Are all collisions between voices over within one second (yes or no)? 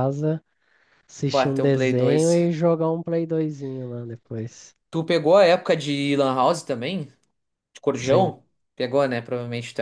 no